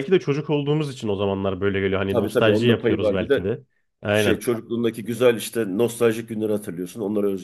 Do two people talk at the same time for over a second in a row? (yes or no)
yes